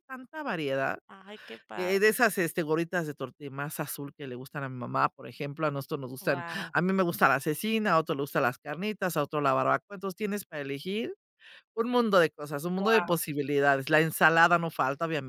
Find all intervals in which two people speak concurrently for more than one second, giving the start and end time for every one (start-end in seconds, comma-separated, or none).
none